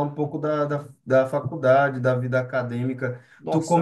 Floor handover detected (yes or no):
no